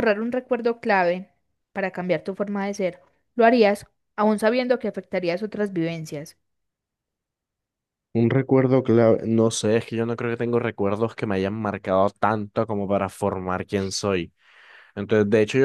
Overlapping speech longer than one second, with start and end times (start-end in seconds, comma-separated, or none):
none